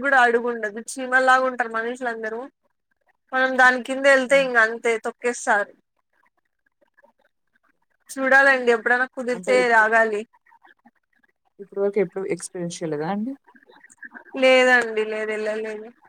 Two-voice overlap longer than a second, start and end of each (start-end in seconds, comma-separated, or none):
none